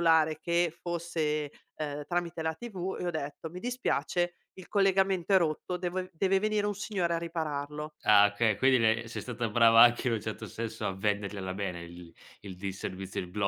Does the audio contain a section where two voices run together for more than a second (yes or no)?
no